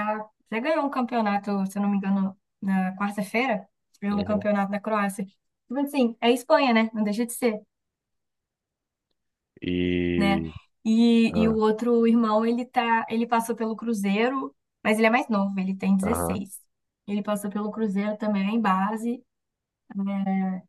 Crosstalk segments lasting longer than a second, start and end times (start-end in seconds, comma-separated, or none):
none